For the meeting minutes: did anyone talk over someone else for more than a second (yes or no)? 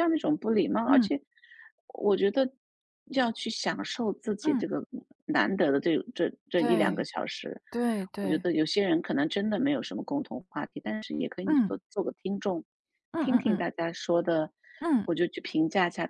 no